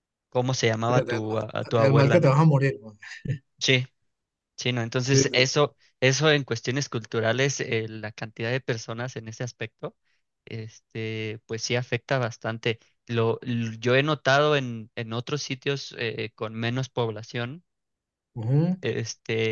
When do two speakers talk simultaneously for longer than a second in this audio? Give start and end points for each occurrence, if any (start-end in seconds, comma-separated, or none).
0.8-2.4